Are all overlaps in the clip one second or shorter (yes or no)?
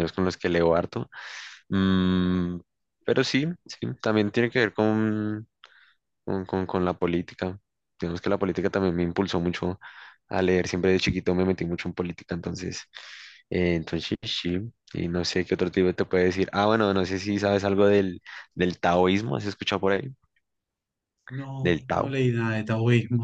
yes